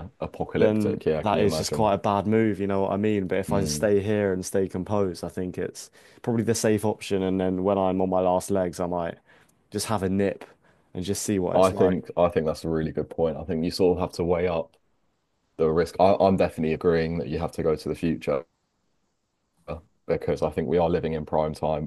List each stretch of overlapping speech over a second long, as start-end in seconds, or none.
0.6-1.9